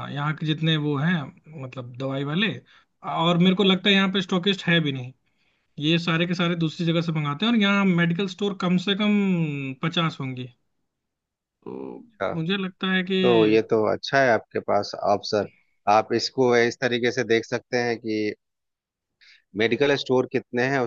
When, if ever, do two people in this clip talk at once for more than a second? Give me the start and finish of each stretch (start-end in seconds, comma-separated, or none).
none